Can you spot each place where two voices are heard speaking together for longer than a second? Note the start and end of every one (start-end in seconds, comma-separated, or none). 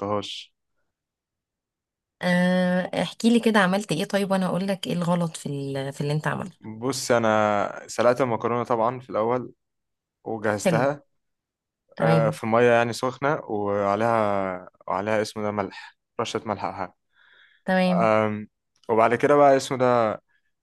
none